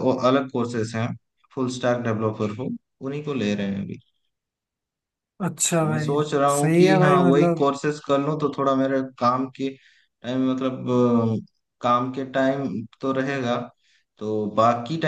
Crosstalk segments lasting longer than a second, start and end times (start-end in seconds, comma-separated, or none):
5.8-7.7